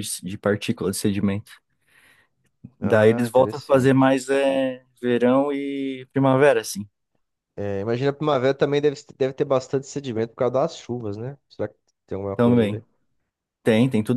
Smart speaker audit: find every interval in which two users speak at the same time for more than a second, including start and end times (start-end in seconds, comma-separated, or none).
2.8-4.1